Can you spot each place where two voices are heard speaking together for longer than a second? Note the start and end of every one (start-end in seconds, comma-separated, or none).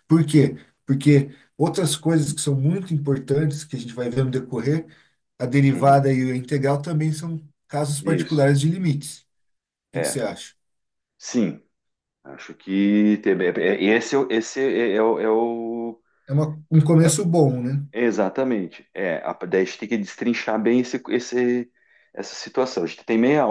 none